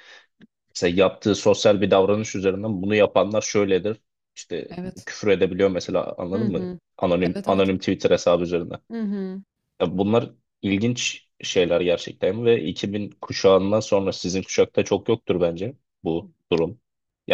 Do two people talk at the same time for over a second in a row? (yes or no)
no